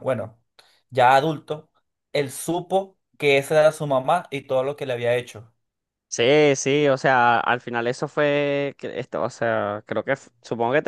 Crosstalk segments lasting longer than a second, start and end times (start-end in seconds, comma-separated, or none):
none